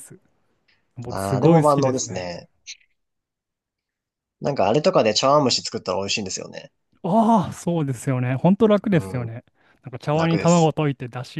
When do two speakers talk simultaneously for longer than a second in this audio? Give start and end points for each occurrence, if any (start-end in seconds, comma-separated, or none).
1.1-2.3